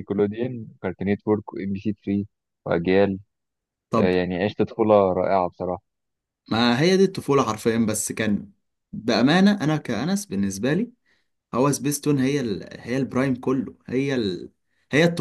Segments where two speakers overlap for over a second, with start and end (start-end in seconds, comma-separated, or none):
none